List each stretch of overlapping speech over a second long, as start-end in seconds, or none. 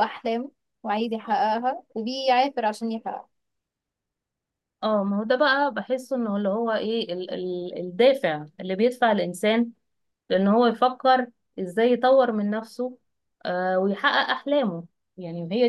none